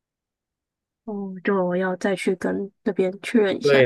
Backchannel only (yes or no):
no